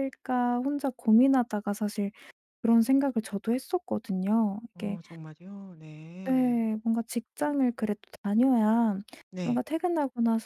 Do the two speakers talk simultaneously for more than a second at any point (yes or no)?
no